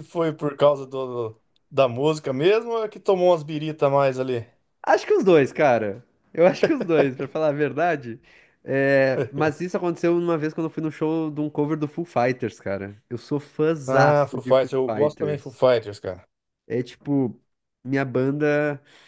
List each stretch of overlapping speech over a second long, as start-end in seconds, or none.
13.8-15.6